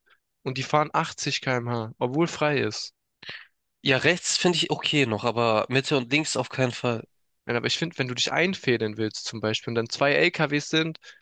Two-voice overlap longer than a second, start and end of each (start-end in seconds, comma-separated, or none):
none